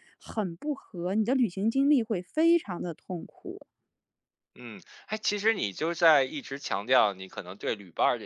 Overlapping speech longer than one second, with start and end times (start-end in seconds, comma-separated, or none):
none